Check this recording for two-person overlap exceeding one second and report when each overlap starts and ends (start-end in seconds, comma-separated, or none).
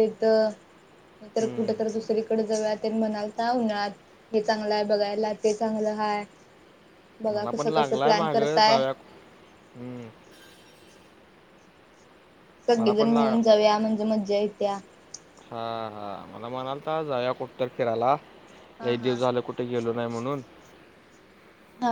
7.3-8.8